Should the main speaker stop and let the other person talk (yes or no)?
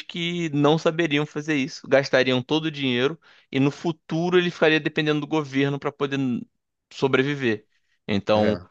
no